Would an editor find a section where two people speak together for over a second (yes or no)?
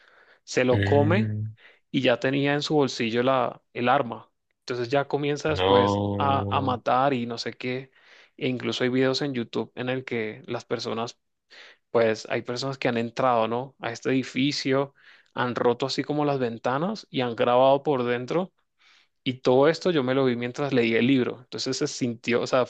yes